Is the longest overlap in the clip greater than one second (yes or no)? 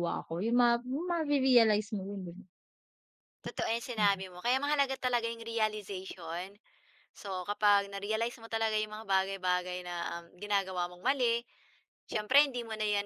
no